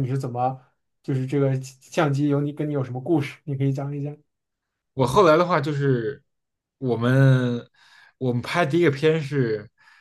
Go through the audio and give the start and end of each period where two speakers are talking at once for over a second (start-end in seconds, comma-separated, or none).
none